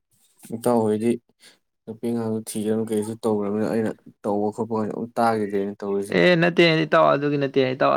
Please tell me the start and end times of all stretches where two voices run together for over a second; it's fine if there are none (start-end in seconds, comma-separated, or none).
none